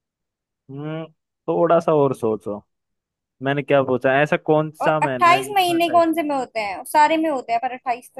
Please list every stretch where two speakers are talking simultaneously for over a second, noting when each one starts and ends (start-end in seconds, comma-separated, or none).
4.8-6.2